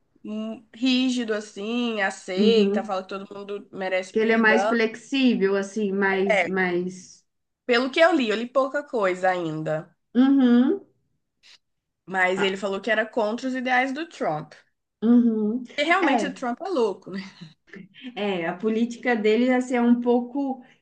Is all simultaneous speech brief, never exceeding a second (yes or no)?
yes